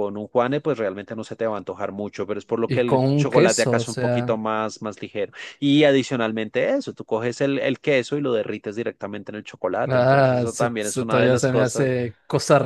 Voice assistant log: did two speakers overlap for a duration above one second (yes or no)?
yes